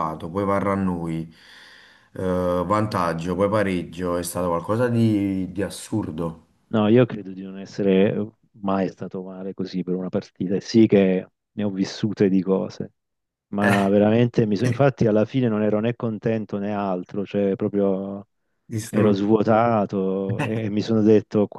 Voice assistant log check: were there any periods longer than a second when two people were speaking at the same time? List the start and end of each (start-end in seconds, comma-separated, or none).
none